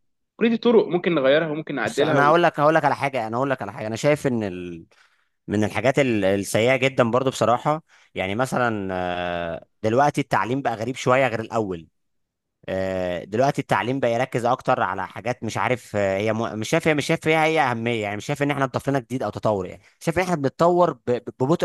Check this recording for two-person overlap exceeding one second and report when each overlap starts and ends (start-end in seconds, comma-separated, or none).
none